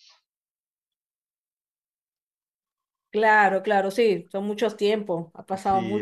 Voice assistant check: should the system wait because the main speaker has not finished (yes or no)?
no